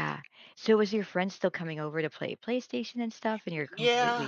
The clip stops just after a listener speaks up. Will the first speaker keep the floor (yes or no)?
no